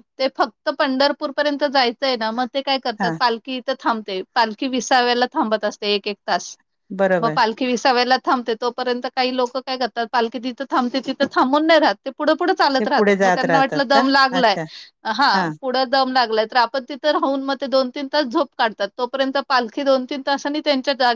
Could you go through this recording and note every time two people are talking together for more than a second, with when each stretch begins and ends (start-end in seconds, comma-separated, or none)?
12.8-14.6